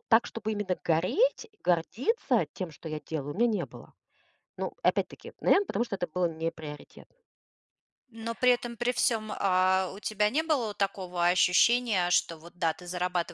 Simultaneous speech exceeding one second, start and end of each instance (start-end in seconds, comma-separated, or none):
none